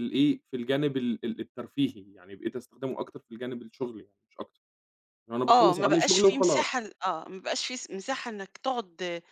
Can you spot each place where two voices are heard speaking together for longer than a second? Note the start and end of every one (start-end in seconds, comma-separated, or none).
5.5-6.9